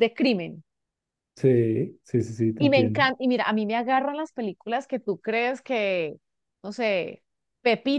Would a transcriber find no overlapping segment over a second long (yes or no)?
yes